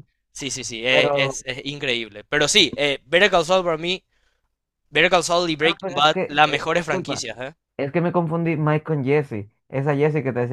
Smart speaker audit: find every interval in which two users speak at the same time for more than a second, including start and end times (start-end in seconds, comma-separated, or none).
5.6-7.2